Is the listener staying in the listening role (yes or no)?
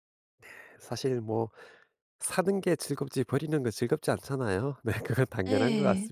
yes